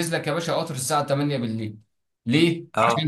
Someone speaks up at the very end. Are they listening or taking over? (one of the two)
listening